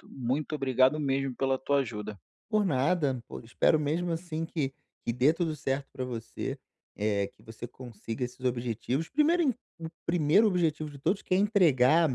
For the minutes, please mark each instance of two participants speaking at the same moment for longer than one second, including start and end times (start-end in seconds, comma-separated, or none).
none